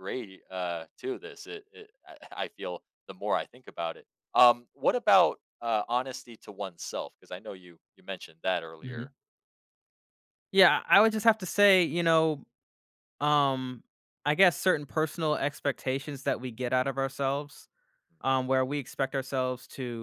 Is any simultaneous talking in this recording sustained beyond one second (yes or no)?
no